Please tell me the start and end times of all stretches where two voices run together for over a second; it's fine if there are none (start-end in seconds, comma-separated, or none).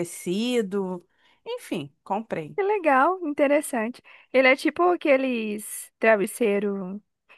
none